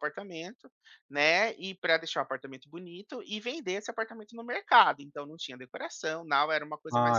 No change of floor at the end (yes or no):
no